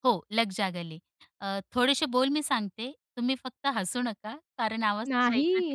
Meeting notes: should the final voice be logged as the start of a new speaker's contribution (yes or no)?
yes